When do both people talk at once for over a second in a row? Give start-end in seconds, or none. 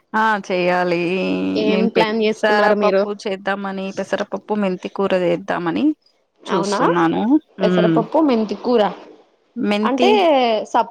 1.7-3.0